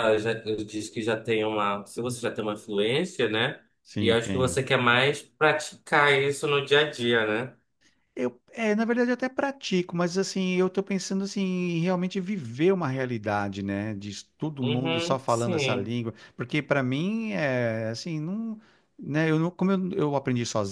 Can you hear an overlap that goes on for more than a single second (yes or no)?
yes